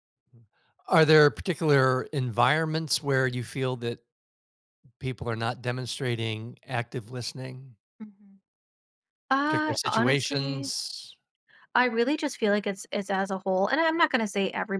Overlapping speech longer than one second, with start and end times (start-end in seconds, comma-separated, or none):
9.4-10.7